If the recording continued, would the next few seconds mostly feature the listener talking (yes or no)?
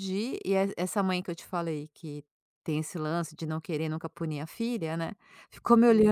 no